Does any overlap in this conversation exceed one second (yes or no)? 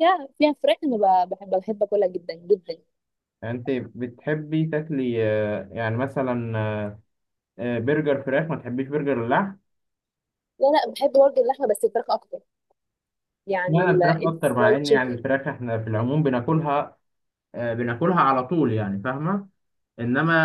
yes